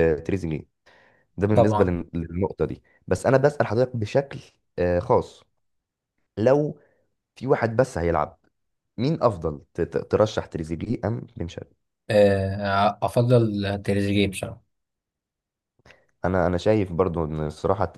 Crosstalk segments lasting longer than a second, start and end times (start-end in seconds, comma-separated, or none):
none